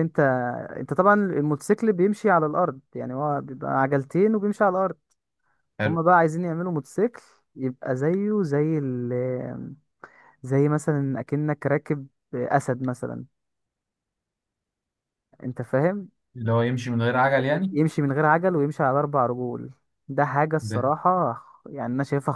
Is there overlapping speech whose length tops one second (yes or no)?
no